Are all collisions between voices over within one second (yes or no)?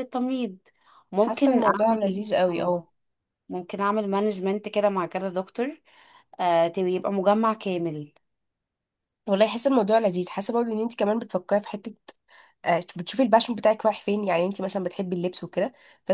no